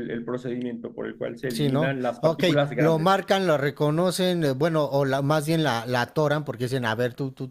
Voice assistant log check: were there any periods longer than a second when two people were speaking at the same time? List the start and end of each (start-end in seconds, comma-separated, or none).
1.5-3.2